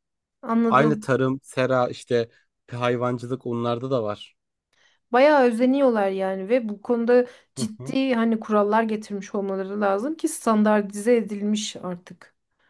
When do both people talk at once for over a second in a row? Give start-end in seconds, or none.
none